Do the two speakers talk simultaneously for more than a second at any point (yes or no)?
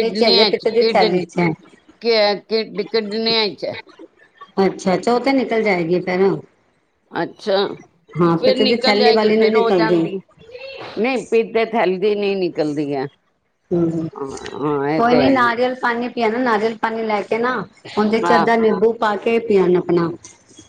yes